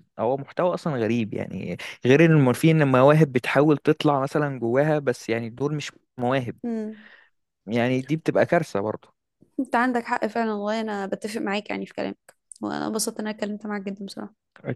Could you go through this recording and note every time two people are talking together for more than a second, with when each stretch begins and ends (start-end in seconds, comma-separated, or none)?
none